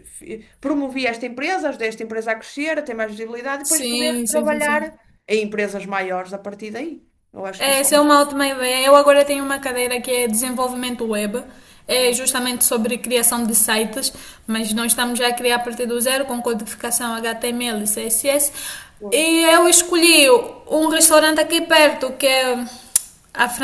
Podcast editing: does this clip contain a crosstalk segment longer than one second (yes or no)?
yes